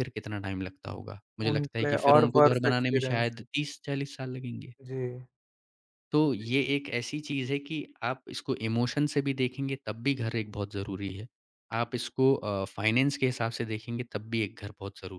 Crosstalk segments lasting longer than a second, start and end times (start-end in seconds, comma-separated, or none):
1.5-3.3